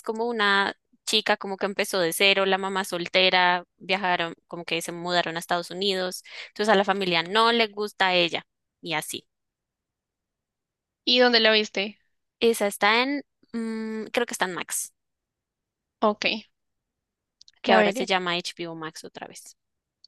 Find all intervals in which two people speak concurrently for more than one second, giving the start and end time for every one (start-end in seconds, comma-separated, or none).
none